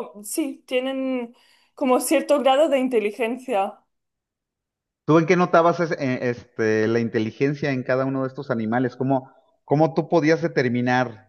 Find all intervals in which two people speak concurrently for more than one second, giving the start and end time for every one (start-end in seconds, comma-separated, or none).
none